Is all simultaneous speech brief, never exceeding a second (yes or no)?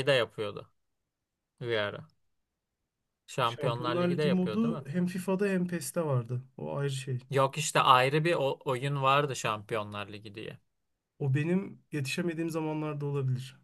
no